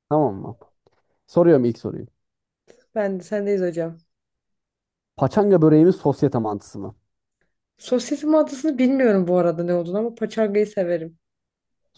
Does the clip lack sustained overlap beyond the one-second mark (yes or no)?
yes